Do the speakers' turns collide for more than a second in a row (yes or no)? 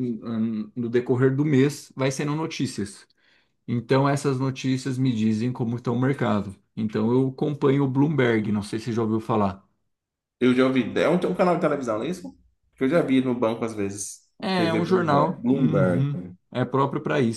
yes